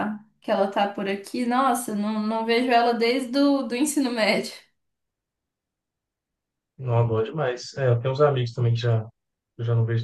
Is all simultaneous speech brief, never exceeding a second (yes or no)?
yes